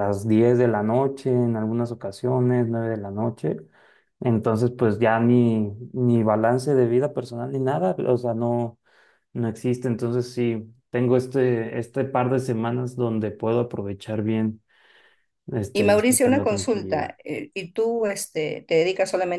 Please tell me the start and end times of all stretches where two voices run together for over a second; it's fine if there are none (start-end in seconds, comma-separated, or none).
15.7-17.1